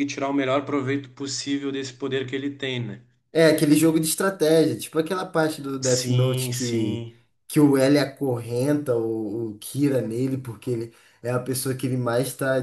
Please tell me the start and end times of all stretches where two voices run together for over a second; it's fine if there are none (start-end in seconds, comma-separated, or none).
5.8-7.0